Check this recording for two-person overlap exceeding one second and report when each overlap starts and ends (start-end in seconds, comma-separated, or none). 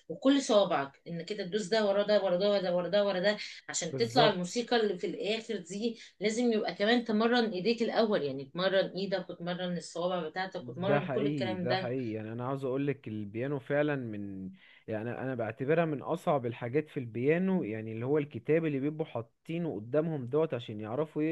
10.6-11.9